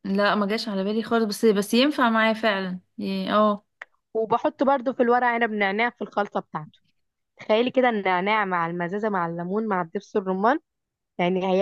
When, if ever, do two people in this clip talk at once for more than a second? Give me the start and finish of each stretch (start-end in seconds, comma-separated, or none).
none